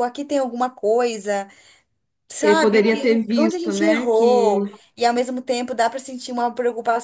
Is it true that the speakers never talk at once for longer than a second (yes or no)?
no